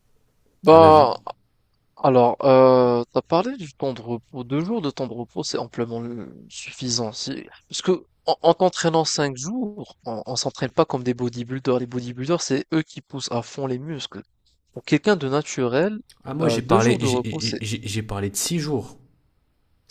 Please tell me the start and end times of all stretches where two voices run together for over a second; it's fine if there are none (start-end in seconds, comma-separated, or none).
16.4-17.6